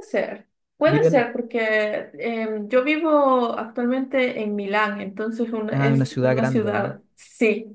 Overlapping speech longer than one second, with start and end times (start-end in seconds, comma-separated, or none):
5.7-7.0